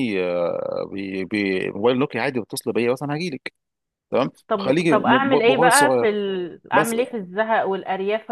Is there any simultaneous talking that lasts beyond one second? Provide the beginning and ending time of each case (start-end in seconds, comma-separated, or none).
4.5-6.1